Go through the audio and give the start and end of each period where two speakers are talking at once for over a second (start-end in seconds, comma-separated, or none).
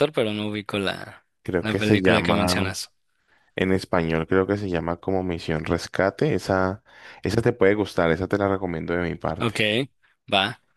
1.4-2.7